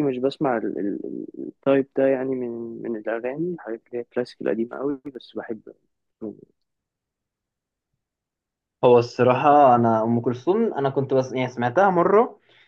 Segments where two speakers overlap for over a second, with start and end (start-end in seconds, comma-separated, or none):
none